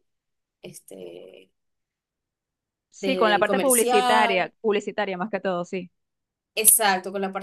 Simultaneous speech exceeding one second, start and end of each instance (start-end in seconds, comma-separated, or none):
3.0-4.5